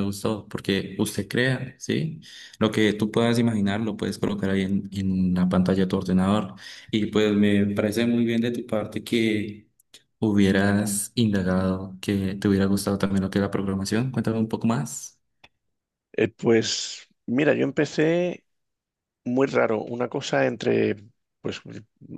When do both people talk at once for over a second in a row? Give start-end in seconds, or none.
none